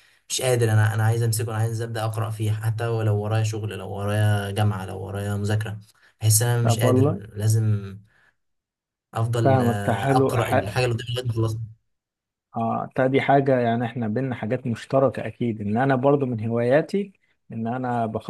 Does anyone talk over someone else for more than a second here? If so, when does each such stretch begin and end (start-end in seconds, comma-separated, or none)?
9.4-10.8